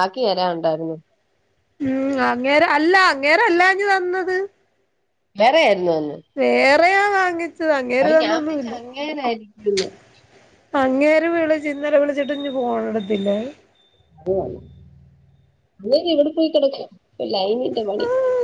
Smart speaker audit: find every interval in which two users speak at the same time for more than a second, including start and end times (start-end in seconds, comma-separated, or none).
none